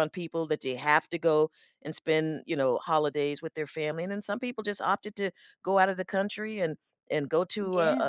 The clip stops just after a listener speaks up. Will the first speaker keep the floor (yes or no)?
yes